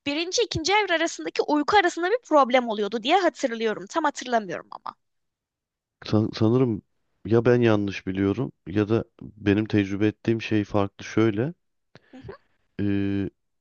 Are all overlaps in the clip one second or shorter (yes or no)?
yes